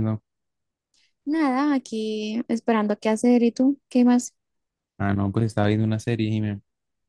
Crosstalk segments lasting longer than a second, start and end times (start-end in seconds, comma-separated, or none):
none